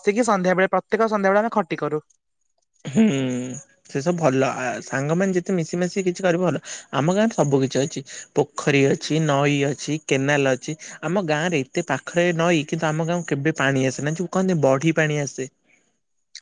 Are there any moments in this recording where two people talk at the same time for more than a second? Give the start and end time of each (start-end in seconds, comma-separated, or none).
none